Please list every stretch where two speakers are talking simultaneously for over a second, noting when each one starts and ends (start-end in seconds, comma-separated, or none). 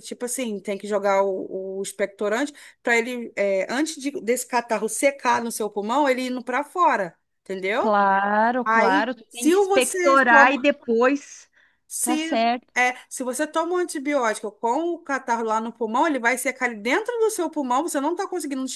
8.6-10.7